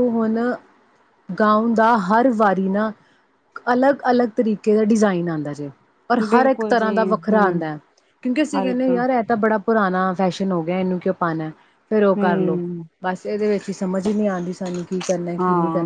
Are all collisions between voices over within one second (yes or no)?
no